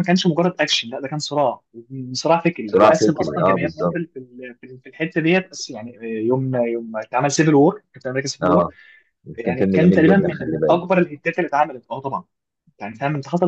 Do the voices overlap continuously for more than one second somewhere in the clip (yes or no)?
yes